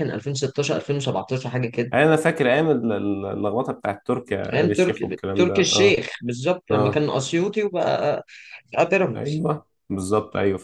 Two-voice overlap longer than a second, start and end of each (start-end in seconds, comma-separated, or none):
4.5-6.0